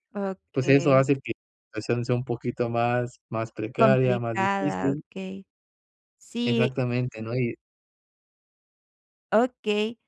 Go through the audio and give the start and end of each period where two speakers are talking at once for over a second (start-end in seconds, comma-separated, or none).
3.8-5.0